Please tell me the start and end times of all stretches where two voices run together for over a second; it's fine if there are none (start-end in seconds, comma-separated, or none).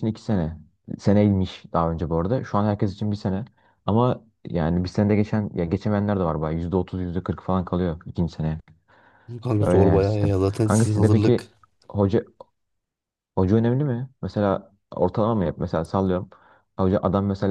9.6-11.5